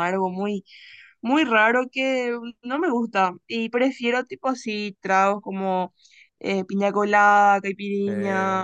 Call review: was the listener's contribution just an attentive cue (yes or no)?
yes